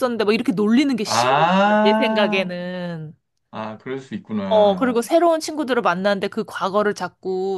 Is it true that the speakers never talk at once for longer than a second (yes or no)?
no